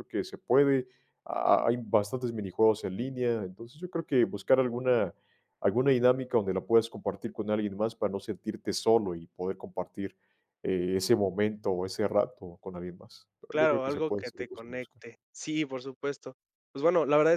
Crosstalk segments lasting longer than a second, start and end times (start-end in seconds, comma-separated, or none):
13.5-15.0